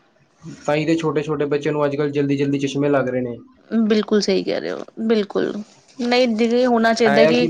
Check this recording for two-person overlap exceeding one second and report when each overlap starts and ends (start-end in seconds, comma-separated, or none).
none